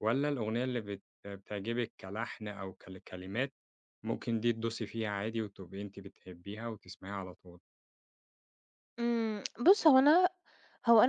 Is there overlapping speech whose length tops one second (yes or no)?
no